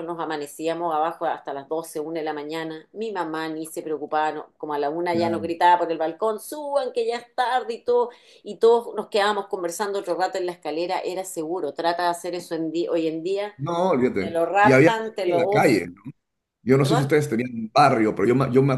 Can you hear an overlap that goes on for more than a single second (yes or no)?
yes